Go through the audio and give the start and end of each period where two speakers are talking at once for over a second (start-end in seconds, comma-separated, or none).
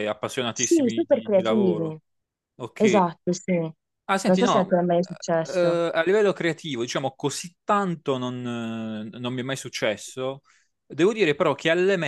0.5-2.0